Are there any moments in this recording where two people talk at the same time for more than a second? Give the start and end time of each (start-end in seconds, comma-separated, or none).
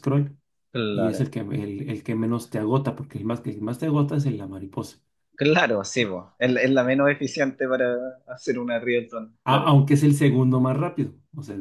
none